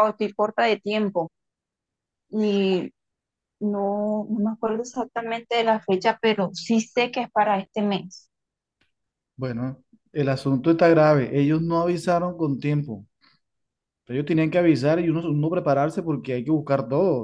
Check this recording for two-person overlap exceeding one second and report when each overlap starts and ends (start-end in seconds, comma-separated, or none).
none